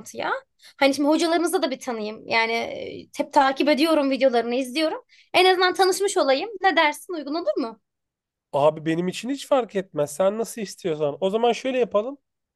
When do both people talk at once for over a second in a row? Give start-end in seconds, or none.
none